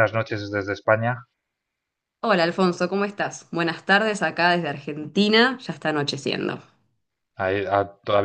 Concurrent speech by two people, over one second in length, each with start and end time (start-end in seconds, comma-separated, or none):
none